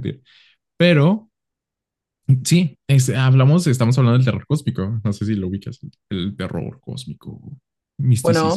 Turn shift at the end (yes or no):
yes